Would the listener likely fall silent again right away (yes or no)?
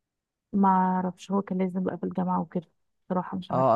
no